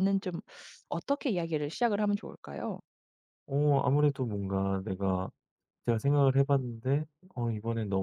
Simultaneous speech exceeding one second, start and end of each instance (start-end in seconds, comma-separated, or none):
none